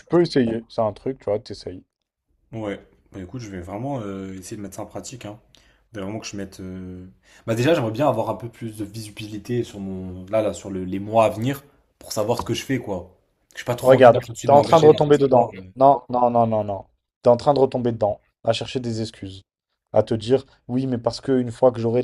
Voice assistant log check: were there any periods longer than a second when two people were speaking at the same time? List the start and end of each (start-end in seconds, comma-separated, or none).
13.8-15.6